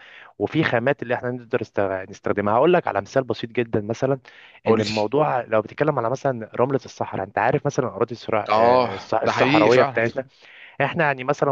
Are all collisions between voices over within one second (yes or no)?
no